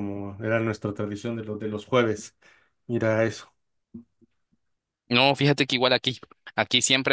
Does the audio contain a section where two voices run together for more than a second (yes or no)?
no